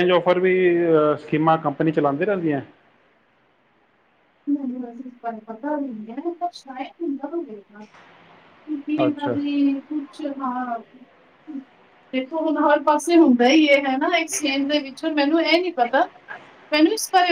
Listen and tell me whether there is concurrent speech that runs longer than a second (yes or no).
no